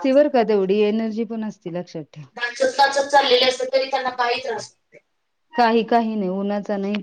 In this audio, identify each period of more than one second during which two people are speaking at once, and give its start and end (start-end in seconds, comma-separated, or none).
none